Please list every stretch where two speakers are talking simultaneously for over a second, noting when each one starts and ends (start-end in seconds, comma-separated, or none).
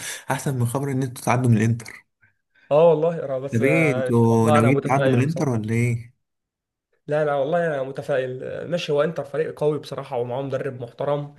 3.5-5.7